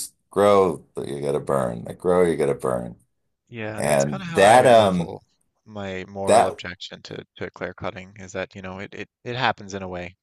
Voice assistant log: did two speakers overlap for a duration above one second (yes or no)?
yes